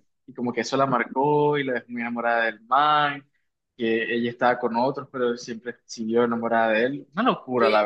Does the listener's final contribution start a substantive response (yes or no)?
yes